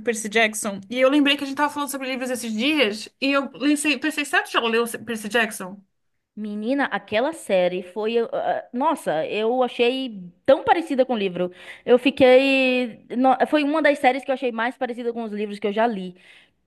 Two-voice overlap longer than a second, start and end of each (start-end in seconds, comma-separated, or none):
none